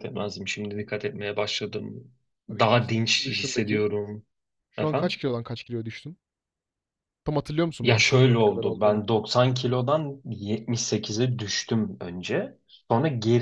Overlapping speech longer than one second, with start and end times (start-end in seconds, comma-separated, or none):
2.5-3.9, 7.8-9.0